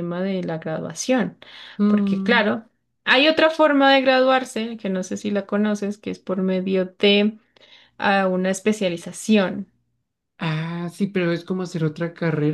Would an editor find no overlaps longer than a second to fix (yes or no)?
yes